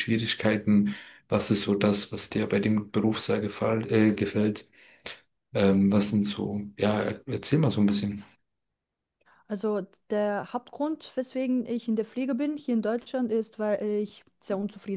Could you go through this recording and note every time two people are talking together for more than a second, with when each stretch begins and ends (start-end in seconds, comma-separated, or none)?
none